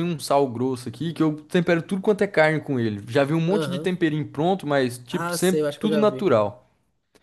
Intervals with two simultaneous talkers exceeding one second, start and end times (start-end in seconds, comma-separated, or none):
5.1-6.3